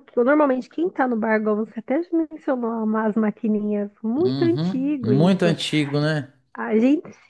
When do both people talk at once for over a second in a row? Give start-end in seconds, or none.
4.2-5.6